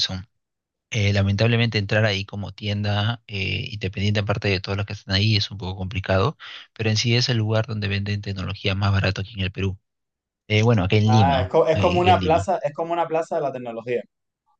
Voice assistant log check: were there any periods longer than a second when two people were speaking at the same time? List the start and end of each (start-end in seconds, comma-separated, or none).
11.1-12.5